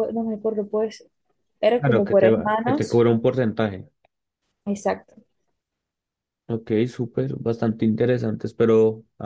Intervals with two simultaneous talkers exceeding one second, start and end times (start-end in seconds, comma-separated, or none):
1.8-3.0